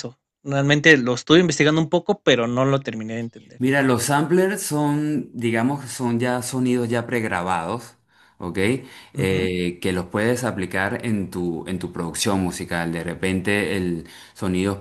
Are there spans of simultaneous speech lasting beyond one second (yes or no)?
no